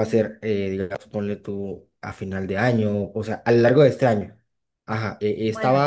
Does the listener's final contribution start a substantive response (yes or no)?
no